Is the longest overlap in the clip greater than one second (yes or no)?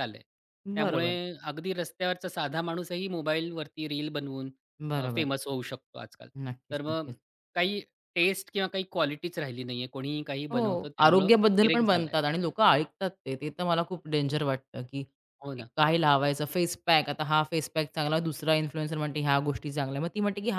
yes